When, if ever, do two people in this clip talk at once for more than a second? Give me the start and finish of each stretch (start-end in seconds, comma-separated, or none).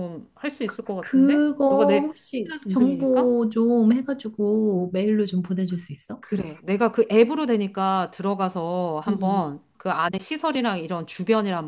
1.0-3.4